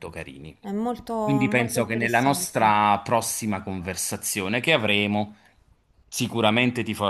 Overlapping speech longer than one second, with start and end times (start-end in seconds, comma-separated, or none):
1.2-2.8